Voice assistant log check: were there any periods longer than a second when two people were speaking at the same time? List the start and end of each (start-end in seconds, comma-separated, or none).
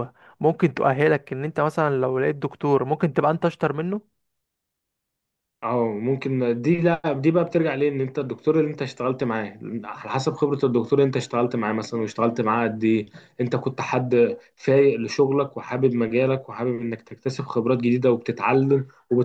none